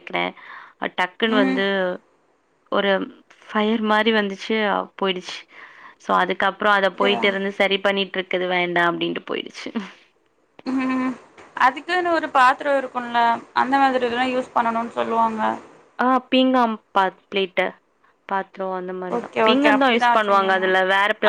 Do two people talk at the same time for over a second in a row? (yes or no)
yes